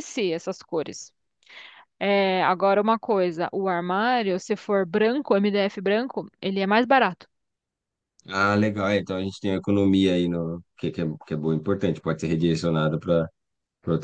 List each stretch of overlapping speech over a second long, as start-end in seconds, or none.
none